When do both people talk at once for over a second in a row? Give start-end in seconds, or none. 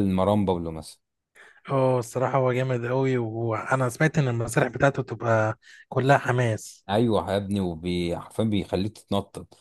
none